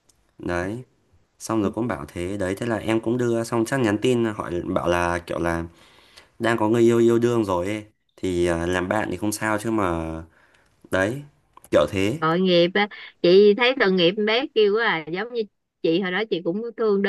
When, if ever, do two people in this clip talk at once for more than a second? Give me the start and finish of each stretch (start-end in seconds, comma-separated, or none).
none